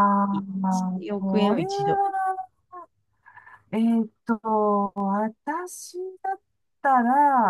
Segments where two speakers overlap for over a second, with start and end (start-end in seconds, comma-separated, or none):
0.6-2.0